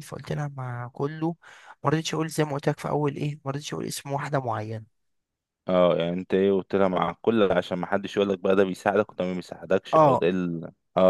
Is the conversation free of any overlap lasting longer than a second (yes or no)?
yes